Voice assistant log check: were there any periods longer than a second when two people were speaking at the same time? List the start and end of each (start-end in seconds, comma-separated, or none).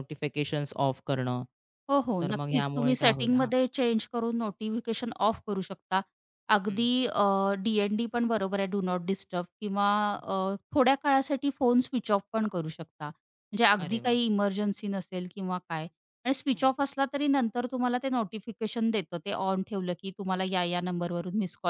2.2-3.5